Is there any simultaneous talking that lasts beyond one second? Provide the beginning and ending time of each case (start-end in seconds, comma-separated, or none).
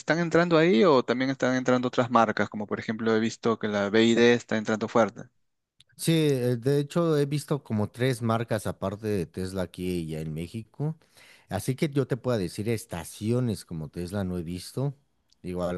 none